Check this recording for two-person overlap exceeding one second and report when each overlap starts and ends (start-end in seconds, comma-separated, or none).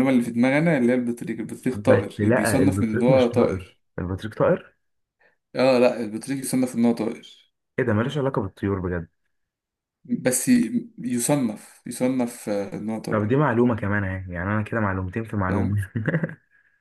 1.7-3.8